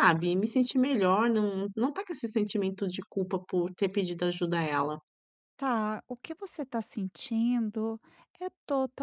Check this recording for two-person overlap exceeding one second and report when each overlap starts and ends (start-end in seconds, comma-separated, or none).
none